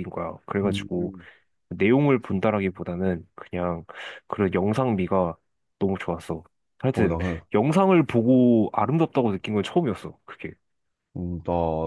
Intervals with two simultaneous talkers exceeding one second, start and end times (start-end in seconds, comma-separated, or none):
none